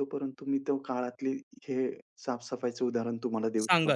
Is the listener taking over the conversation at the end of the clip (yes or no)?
yes